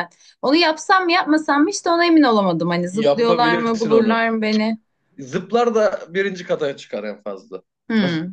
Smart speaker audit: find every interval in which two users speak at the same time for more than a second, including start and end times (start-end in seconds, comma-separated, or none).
2.9-4.3